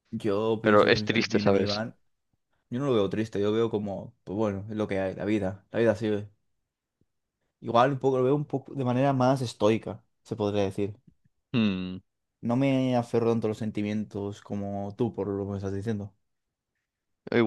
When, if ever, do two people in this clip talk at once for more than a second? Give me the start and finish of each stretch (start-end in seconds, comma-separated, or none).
0.6-1.8